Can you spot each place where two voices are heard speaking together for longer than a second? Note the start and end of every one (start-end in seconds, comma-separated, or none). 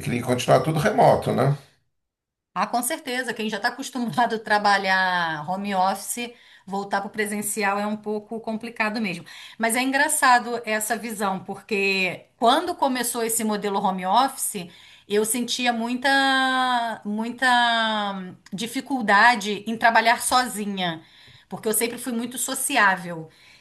none